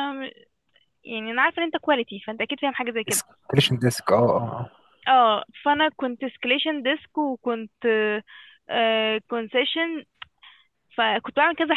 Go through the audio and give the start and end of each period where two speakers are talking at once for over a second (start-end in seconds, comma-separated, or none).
none